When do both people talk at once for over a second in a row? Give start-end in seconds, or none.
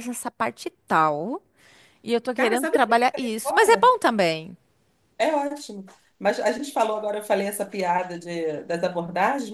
2.4-4.0